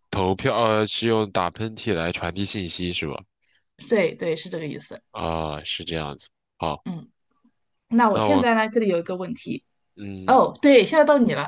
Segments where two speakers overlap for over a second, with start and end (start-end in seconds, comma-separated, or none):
none